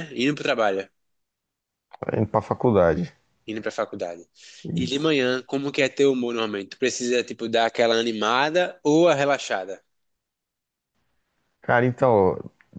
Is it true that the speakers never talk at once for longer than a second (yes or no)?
yes